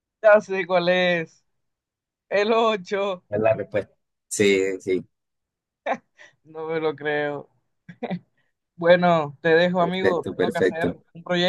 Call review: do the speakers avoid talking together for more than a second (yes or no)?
no